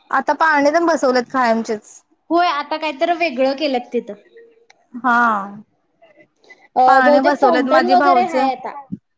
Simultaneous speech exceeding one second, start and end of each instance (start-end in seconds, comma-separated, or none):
6.9-8.3